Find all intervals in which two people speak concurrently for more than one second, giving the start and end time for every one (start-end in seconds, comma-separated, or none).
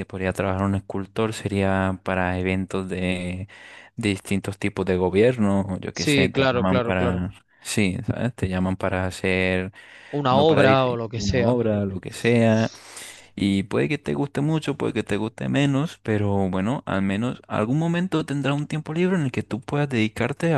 5.9-7.2, 10.3-11.5